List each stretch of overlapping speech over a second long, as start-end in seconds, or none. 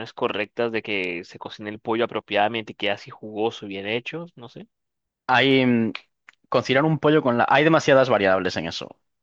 none